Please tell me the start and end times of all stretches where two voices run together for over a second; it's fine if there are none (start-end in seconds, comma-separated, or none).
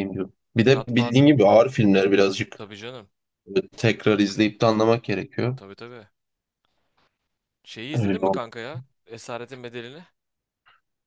none